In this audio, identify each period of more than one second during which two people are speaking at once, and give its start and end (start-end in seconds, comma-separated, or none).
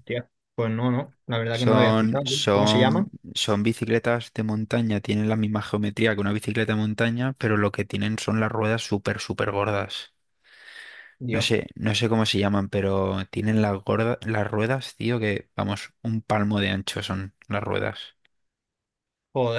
1.5-3.1